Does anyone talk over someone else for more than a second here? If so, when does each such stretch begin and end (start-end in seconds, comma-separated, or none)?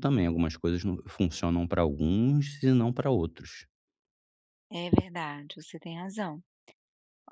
none